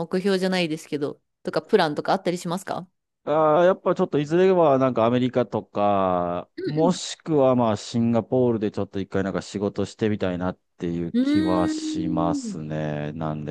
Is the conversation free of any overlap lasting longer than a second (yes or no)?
no